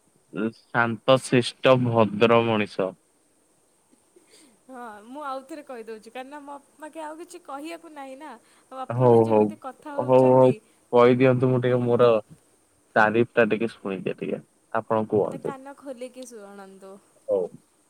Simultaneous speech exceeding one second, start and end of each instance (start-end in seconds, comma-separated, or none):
9.0-10.5